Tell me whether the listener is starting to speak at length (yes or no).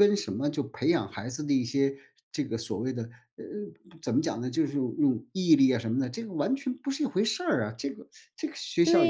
yes